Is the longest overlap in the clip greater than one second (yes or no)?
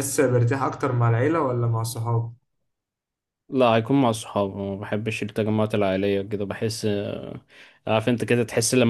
no